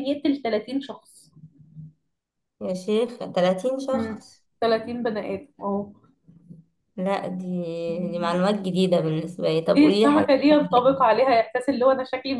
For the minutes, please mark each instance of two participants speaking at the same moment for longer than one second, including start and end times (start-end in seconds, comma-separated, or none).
9.7-10.9